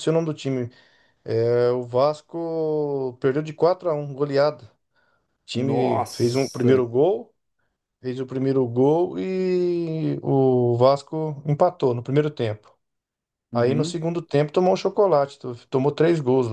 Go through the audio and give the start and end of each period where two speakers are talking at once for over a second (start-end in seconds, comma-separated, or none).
5.5-6.8